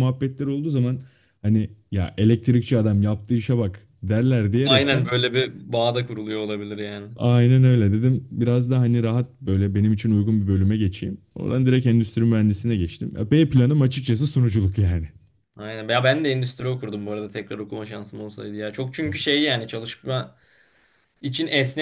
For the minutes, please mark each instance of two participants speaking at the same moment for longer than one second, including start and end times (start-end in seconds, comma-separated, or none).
none